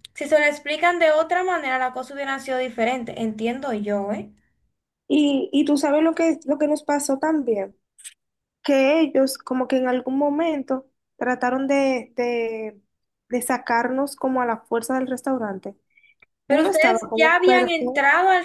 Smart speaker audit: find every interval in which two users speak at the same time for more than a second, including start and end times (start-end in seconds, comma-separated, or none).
16.5-17.7